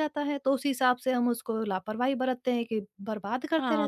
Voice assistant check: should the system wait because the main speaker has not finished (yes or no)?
no